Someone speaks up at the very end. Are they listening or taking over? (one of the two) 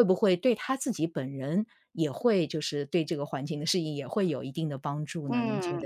taking over